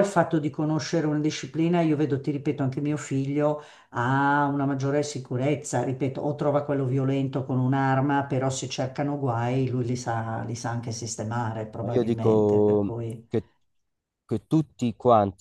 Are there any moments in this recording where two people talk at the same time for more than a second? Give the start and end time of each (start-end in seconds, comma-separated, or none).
11.8-13.3